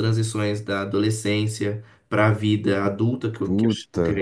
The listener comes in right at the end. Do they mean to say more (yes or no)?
no